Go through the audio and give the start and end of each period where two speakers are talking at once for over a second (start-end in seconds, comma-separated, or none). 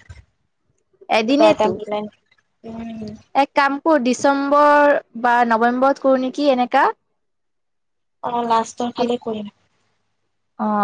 none